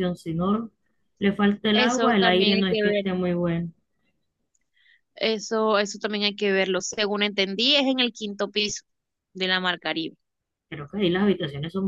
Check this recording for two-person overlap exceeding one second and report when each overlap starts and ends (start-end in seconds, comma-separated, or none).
1.7-3.0